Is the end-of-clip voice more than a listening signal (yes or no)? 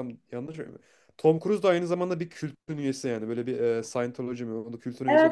yes